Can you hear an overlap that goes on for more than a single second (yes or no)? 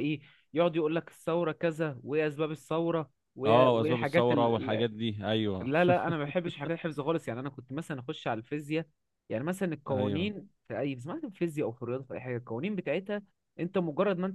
yes